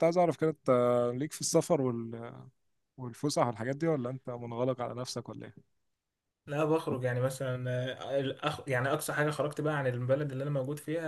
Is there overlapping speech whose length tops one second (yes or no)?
no